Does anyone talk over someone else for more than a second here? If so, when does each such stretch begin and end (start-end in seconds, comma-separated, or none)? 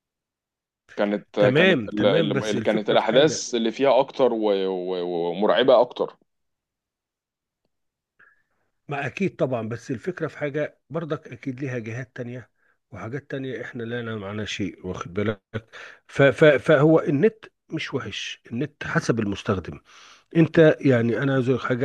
1.4-3.5